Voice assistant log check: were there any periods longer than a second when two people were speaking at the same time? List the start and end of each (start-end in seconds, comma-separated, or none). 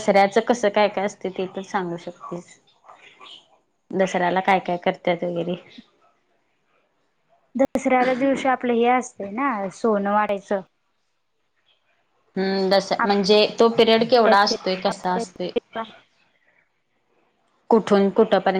14.1-15.5